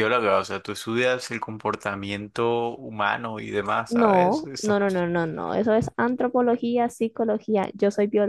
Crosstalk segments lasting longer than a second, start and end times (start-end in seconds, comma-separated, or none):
3.9-5.1